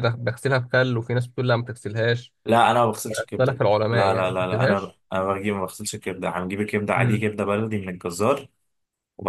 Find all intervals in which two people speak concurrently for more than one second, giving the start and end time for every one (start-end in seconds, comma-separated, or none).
3.1-4.9